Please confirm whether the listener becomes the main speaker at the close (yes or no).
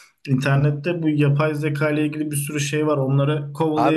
yes